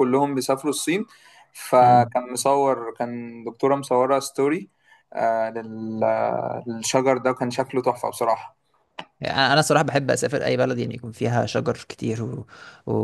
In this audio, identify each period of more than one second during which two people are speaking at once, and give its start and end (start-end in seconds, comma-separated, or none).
none